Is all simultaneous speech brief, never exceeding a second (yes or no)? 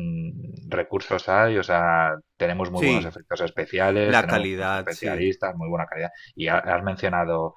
no